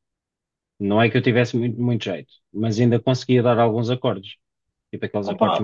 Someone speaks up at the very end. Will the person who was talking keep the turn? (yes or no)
no